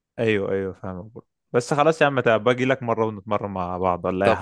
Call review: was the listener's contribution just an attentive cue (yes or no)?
no